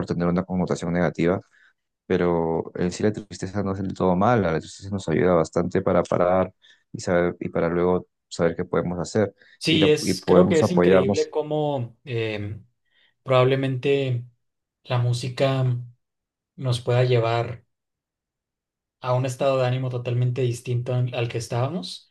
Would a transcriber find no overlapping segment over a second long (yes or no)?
no